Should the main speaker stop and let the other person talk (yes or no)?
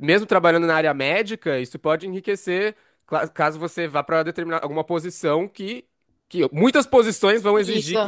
no